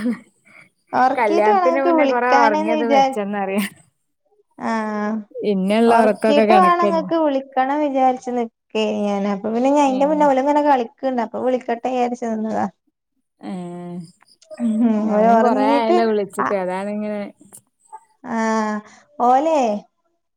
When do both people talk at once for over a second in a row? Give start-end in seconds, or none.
1.2-2.7